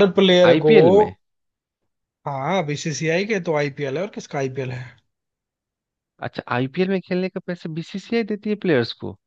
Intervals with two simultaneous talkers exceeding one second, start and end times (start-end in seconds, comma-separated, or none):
none